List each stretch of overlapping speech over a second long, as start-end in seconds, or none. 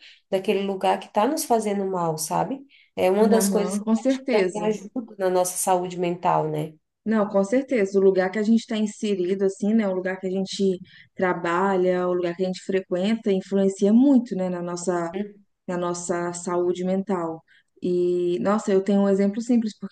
3.3-4.8